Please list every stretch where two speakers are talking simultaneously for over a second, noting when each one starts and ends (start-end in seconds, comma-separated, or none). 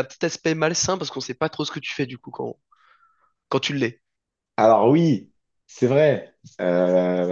none